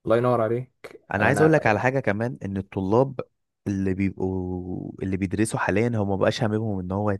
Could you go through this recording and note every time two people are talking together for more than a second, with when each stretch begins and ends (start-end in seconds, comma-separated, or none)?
none